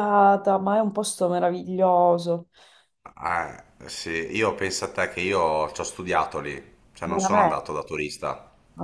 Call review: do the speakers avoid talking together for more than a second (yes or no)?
yes